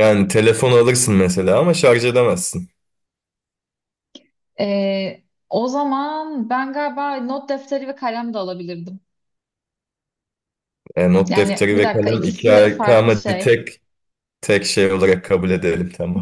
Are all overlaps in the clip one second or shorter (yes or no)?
no